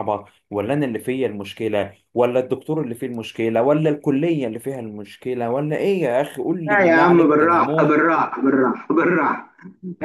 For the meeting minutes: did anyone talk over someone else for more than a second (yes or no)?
yes